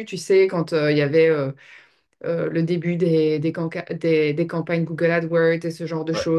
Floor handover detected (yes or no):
no